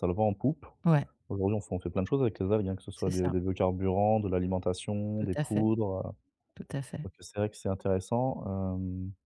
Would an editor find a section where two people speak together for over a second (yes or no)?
no